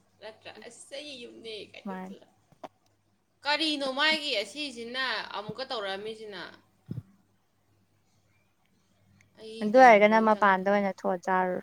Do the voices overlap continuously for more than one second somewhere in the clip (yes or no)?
yes